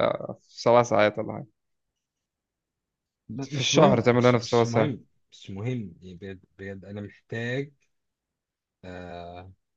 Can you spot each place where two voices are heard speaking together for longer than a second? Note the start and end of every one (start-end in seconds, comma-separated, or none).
3.4-5.0